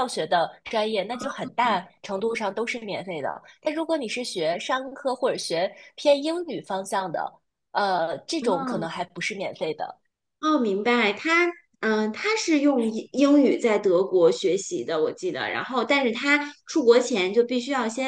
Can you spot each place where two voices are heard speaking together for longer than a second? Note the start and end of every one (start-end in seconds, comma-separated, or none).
none